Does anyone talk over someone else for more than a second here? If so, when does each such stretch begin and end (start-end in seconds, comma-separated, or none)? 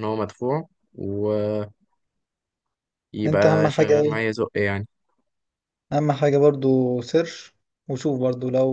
none